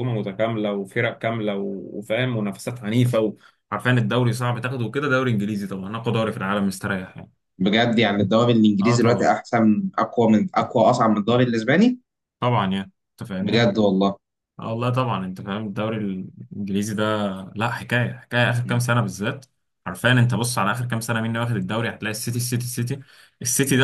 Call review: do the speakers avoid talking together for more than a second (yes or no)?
yes